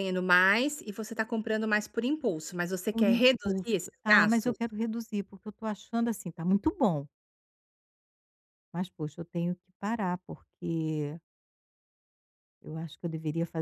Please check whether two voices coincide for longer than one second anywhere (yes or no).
yes